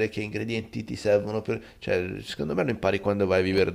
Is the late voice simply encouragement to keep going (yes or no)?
no